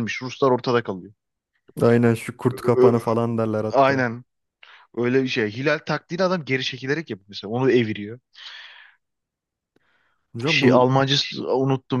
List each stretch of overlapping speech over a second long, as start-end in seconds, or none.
none